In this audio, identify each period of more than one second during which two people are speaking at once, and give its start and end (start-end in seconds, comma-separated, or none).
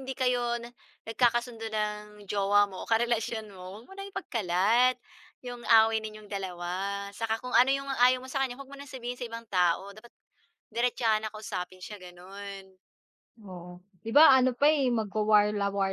none